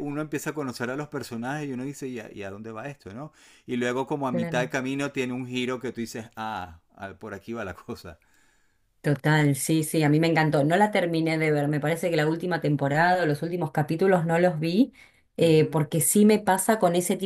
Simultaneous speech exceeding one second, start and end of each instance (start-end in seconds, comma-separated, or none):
none